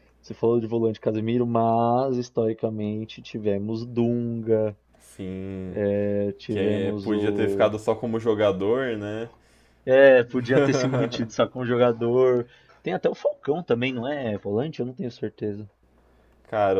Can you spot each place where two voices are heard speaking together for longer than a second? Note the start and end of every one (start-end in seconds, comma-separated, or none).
6.5-7.7